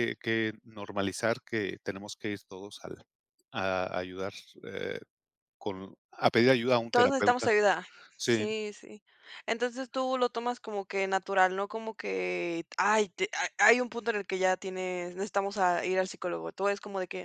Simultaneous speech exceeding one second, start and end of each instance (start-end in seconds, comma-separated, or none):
none